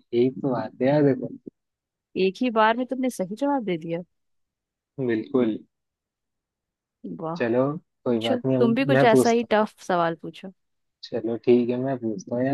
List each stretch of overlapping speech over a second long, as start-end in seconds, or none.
8.1-9.7